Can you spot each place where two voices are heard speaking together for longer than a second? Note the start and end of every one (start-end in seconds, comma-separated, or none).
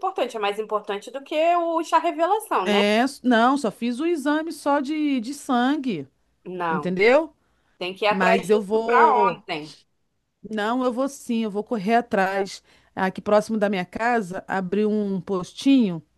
8.1-9.4